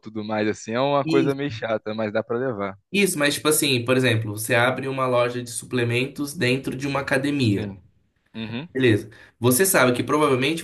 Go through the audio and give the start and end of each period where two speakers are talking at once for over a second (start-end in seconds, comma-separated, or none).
none